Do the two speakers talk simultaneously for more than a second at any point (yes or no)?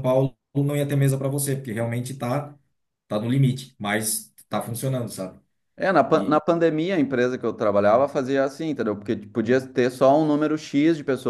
no